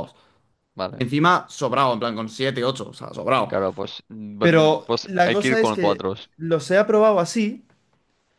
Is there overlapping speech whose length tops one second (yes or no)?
yes